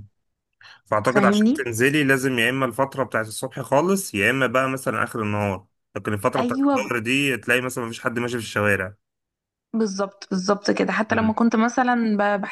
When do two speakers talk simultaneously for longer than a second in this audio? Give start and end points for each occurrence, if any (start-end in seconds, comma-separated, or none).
none